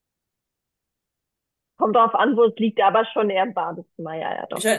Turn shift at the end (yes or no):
yes